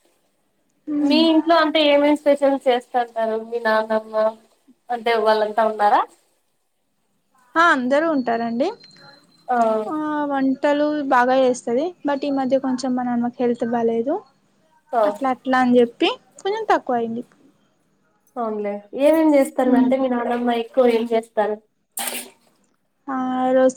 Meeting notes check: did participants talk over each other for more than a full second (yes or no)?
no